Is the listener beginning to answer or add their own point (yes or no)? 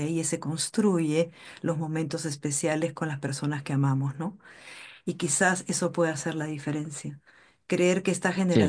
no